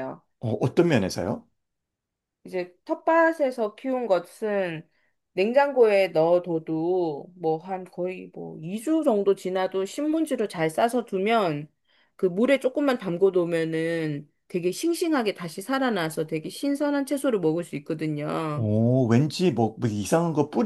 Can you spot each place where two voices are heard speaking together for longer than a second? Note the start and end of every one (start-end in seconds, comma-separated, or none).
none